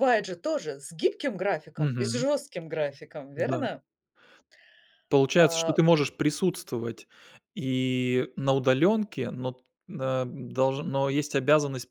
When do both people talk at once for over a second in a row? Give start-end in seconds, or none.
none